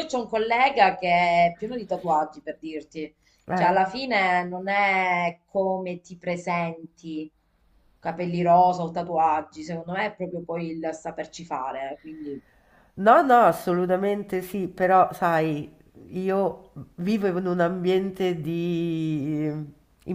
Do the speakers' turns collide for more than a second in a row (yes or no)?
no